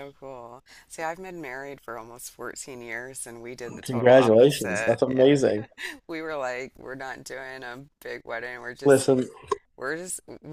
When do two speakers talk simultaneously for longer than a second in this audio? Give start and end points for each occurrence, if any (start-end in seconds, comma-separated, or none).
3.8-5.2